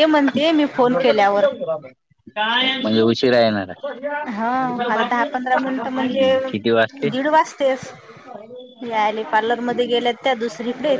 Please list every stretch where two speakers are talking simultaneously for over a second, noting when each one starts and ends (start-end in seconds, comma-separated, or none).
none